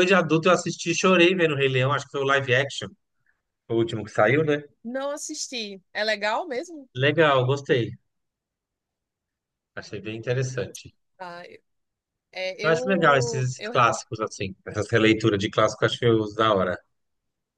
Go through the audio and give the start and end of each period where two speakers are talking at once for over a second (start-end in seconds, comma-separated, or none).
12.6-14.1